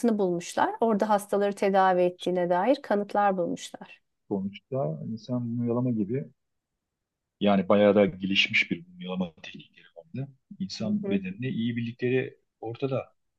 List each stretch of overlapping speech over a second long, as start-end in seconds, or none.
none